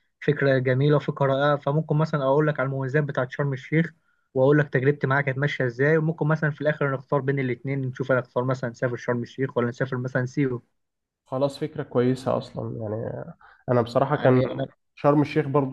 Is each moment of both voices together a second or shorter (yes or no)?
yes